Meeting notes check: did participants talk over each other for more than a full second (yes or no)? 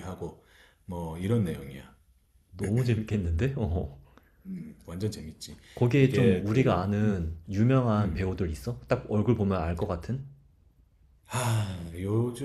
yes